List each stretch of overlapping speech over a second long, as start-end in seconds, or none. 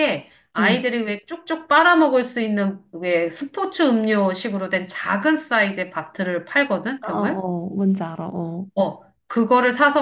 none